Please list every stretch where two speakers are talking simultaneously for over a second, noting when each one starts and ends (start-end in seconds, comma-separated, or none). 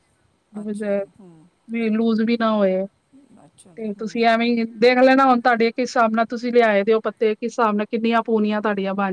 none